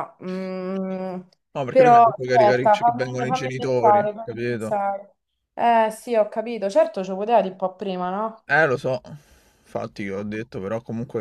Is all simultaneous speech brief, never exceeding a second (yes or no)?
no